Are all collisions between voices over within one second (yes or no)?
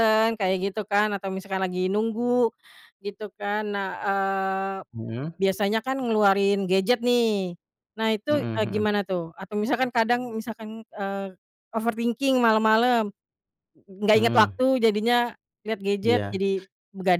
yes